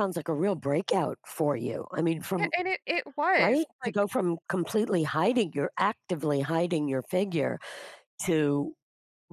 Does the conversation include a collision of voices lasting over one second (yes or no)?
no